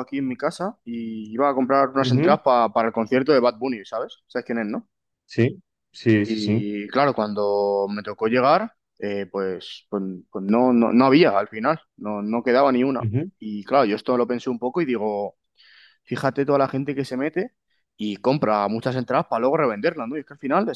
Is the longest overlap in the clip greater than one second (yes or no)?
no